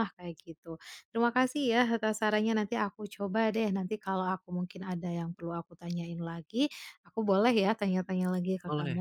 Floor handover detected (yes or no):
yes